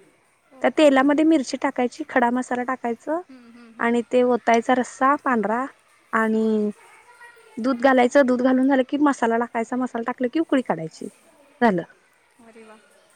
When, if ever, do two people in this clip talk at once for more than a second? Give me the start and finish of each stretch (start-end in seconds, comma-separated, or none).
none